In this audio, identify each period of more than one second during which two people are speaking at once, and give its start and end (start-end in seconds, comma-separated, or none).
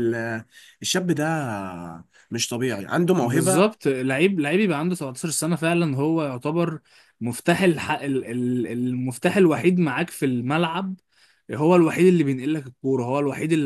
none